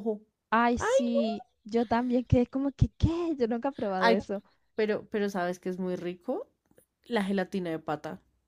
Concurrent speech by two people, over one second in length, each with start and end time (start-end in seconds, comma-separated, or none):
none